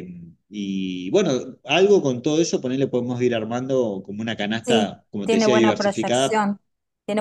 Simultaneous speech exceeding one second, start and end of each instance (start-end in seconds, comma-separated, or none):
4.6-6.5